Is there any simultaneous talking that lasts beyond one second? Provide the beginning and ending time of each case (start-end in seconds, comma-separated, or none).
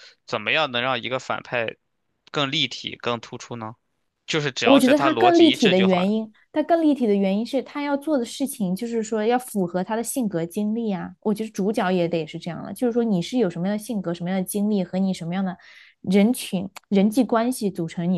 4.6-6.1